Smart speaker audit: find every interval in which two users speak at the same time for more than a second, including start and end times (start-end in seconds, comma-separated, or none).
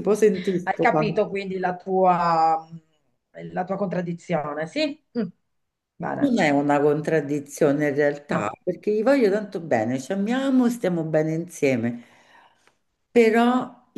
none